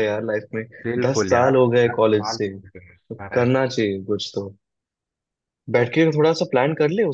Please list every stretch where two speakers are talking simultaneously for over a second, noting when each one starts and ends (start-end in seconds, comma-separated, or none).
1.1-3.7